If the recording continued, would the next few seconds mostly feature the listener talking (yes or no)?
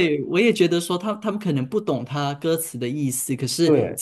no